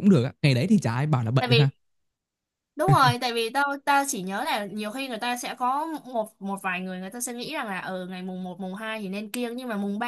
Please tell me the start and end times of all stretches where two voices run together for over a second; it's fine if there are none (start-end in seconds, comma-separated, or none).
none